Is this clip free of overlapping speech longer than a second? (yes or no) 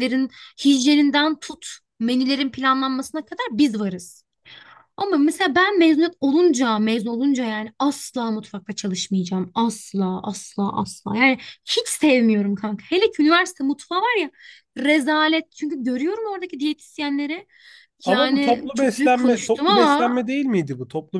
no